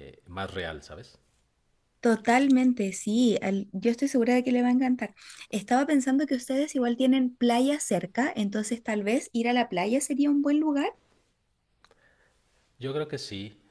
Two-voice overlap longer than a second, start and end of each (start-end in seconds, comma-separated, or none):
none